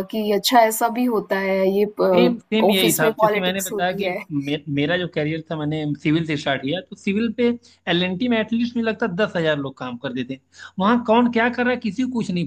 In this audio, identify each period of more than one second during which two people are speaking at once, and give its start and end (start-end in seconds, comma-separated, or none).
2.1-4.2